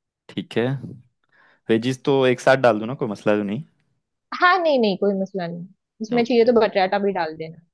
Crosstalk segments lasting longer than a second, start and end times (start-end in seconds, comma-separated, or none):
none